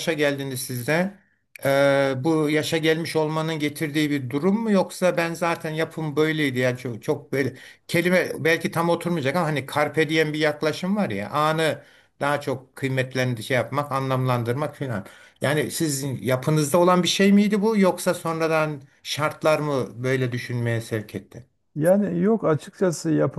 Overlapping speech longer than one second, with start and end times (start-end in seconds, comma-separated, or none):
none